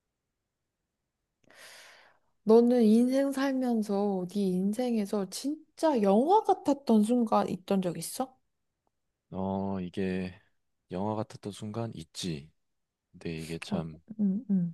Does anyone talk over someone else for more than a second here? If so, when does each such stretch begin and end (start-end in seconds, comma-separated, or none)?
none